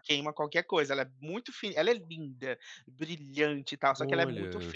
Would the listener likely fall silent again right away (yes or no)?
yes